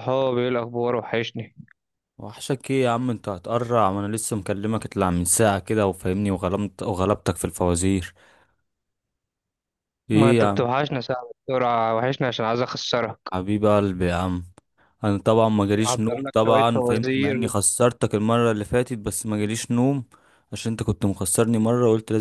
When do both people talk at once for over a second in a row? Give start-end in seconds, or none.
15.8-17.4